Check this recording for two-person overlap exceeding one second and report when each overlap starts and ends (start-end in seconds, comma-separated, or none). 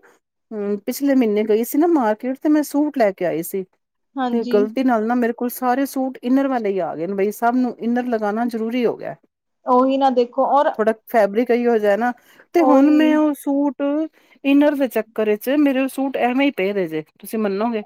none